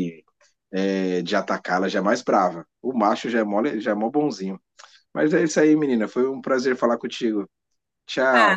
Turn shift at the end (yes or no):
yes